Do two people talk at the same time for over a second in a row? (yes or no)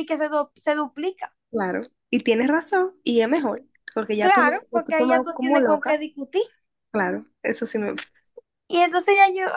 yes